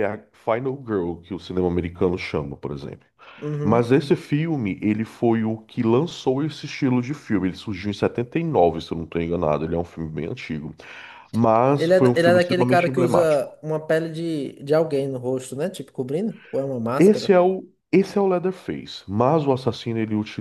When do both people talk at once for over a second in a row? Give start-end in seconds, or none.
11.8-13.6